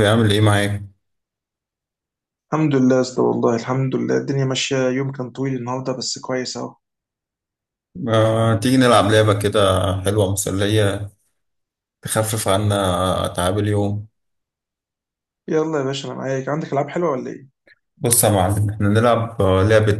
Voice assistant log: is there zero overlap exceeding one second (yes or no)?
yes